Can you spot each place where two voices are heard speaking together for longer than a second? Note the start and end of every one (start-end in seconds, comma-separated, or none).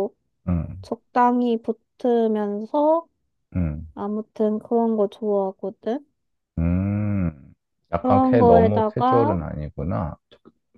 8.0-9.4